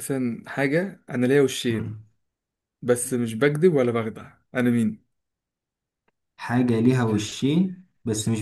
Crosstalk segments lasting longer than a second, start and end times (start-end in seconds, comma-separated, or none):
none